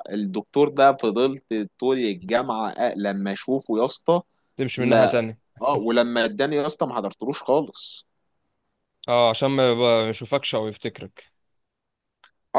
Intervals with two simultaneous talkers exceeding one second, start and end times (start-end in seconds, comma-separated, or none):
none